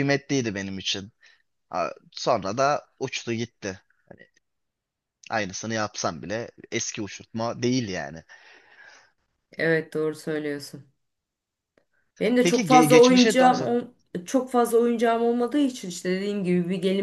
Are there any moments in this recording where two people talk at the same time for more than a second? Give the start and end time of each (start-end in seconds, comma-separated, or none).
12.4-13.7